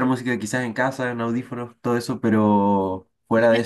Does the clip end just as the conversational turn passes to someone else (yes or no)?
no